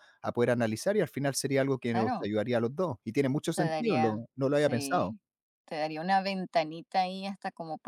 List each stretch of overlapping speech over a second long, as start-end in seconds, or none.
3.5-5.1